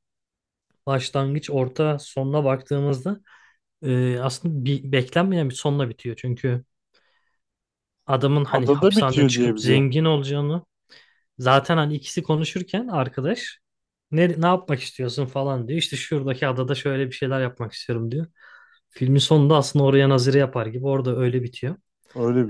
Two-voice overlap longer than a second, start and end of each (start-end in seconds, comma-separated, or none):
8.5-9.9